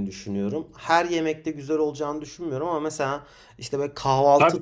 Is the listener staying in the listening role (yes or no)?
yes